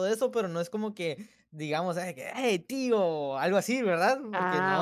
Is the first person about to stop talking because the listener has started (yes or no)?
yes